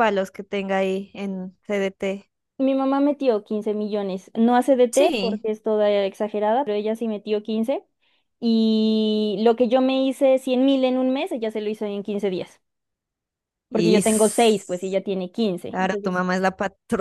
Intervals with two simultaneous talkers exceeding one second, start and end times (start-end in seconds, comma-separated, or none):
13.7-14.9